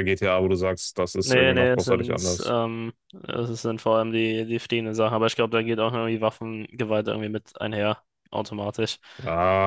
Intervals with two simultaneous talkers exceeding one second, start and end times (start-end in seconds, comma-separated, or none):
1.2-2.5